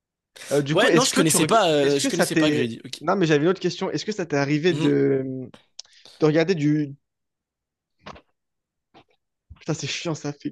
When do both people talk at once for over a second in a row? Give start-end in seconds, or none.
0.7-3.0